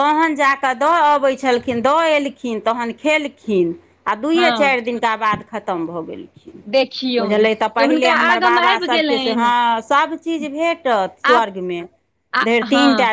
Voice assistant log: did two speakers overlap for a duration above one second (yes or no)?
yes